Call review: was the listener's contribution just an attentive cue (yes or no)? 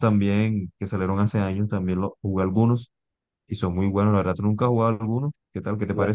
no